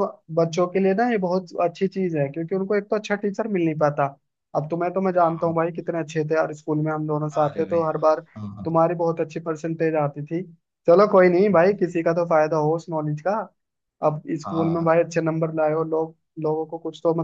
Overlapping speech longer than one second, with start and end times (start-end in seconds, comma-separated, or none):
none